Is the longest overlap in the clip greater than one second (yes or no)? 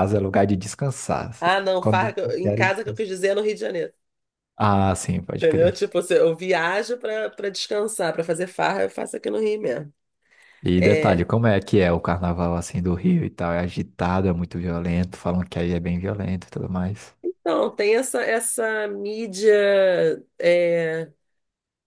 yes